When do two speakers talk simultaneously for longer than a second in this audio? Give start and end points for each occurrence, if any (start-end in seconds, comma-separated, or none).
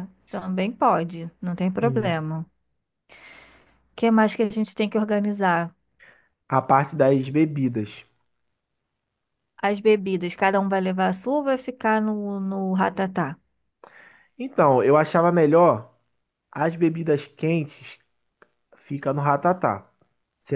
none